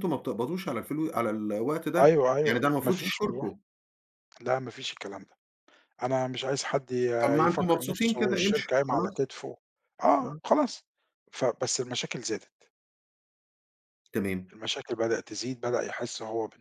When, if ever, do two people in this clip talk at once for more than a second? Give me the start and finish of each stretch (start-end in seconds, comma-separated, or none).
2.0-3.5, 7.2-9.2